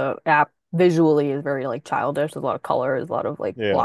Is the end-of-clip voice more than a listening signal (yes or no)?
no